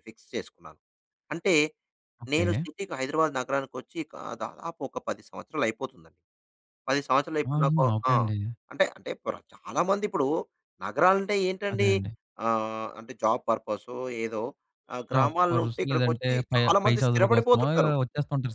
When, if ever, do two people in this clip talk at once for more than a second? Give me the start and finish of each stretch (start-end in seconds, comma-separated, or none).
15.2-17.6